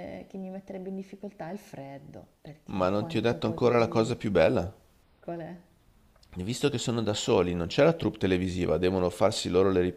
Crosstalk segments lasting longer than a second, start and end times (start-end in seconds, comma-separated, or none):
2.7-4.2